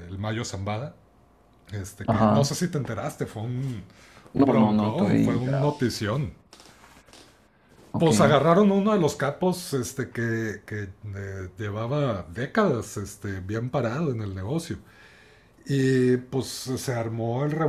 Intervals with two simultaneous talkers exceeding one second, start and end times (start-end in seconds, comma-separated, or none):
4.5-5.8